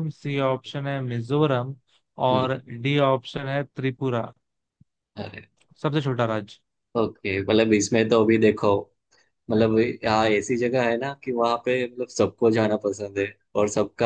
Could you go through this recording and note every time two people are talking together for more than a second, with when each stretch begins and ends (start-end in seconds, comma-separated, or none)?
none